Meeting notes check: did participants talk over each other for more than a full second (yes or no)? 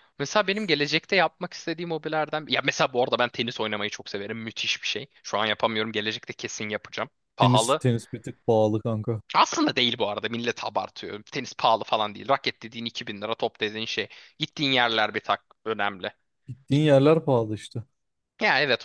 no